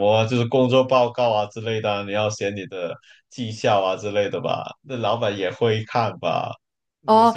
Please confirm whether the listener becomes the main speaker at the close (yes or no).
yes